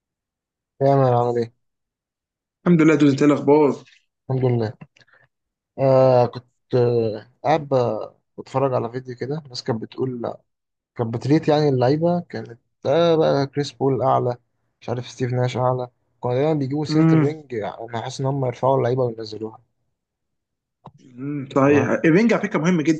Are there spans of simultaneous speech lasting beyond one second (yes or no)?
no